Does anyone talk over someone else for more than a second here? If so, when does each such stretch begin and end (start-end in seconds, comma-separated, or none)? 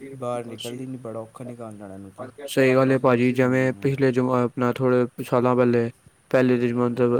none